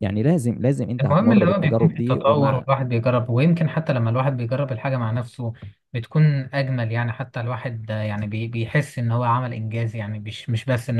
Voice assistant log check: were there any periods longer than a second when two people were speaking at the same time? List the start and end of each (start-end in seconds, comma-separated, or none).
1.0-2.6